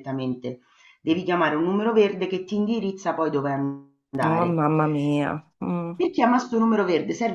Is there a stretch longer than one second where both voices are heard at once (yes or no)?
no